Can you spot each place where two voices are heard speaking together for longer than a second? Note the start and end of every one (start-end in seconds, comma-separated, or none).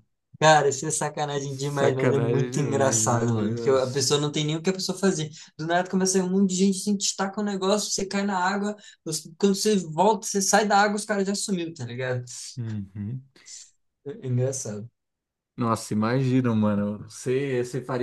1.8-4.1